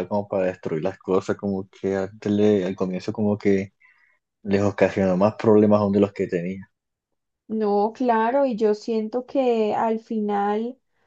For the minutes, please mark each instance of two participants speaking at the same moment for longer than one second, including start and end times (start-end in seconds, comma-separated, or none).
none